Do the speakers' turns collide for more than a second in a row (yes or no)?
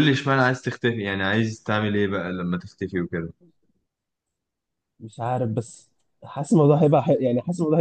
no